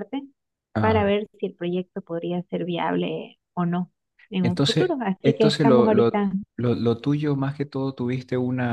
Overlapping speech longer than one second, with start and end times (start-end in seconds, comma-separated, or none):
4.4-6.1